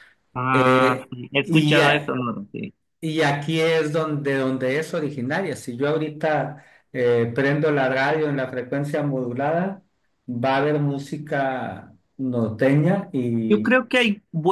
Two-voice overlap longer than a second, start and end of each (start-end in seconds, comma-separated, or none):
0.5-2.2